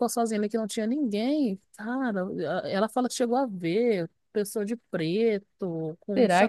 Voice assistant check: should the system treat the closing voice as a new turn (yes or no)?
yes